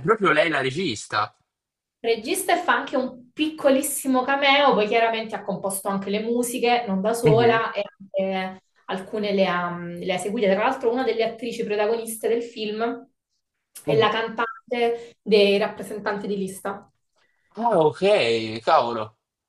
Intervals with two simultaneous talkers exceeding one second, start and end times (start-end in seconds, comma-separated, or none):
none